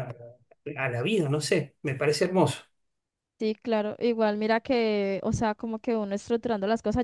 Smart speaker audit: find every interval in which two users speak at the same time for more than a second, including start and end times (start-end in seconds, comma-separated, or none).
none